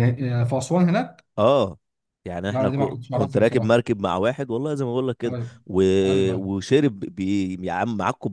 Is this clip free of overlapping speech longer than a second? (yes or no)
no